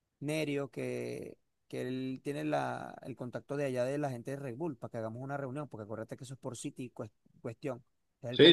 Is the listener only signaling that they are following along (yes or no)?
no